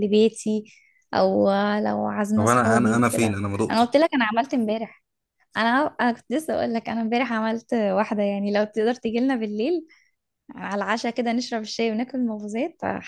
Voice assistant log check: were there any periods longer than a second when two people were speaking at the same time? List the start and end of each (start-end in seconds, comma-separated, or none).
2.3-3.9